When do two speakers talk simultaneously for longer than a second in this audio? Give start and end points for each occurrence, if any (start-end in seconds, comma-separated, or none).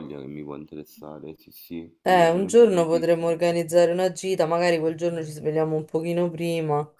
2.0-3.4